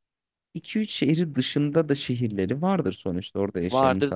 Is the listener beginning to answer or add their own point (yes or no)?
yes